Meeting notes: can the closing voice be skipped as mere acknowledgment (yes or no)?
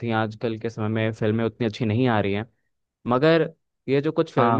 yes